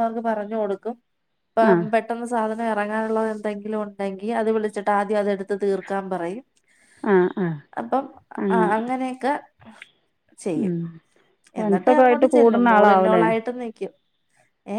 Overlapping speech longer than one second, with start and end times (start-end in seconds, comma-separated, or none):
11.6-13.2